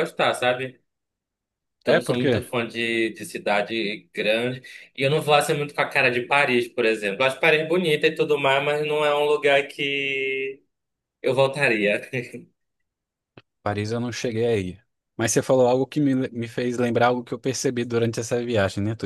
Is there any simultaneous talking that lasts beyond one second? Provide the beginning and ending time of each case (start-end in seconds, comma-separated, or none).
none